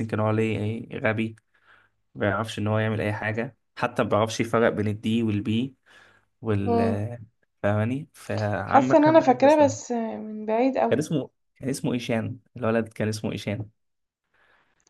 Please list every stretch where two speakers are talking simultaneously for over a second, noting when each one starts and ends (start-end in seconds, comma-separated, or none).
8.7-9.9